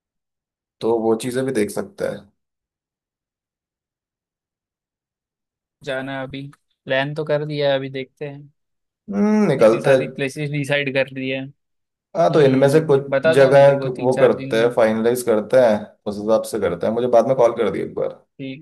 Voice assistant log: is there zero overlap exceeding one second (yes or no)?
no